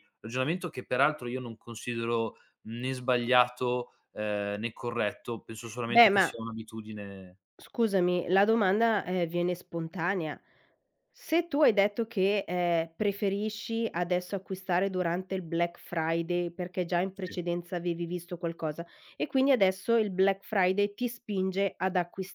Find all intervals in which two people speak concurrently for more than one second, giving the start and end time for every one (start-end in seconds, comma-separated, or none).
none